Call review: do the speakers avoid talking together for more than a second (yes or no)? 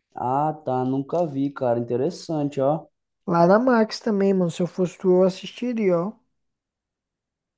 yes